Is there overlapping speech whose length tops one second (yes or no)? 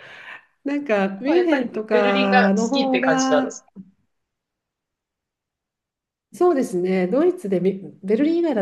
yes